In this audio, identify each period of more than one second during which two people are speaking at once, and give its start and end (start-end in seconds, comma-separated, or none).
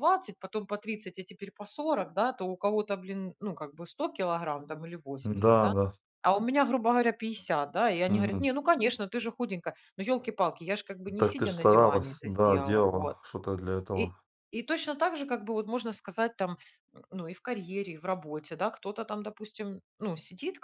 11.2-13.2